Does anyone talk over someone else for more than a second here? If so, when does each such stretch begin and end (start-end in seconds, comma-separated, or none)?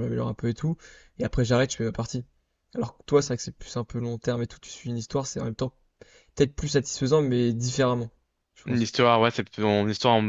none